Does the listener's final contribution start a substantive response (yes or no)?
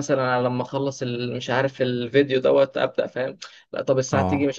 no